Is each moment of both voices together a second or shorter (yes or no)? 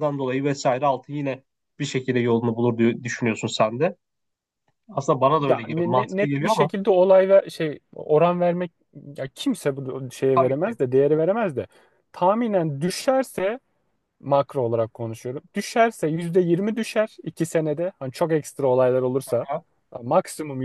no